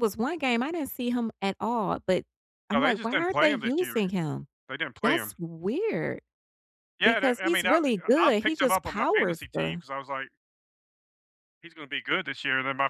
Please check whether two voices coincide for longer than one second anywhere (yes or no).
yes